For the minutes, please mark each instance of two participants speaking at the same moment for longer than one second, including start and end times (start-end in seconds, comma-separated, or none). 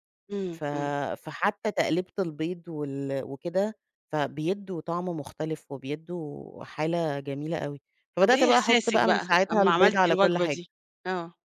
8.2-10.6